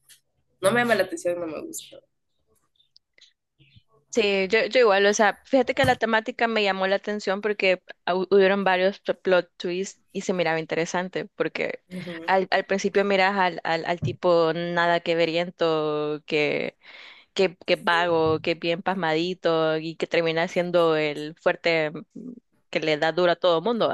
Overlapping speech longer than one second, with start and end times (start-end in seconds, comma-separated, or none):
none